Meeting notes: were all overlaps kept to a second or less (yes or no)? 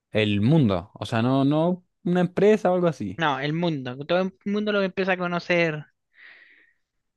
yes